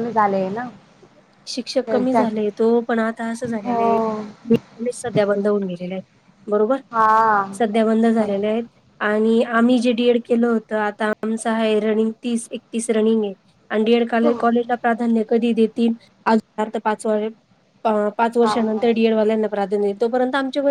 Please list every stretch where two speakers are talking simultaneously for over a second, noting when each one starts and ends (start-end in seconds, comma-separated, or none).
none